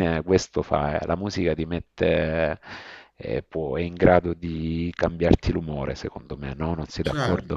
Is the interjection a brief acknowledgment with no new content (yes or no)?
no